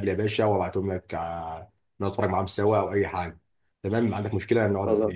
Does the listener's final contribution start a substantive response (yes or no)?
no